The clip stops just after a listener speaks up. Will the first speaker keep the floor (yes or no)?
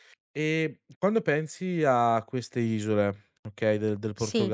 yes